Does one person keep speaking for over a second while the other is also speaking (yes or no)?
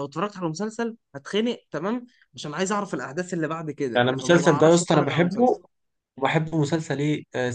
yes